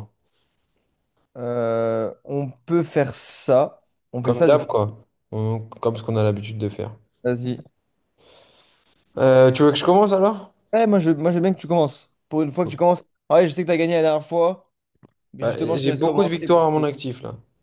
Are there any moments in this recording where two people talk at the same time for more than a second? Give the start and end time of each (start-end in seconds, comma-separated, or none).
15.4-16.8